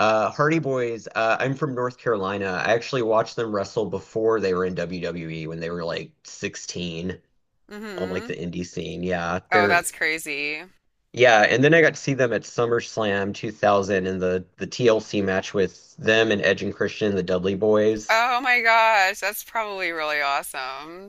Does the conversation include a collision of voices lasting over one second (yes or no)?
no